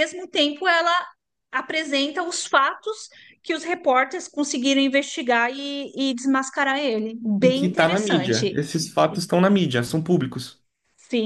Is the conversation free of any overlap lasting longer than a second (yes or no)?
no